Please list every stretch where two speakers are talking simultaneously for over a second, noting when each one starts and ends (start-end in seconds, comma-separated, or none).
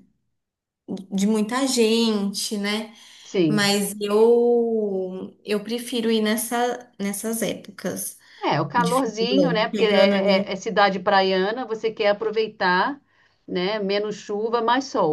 8.7-10.6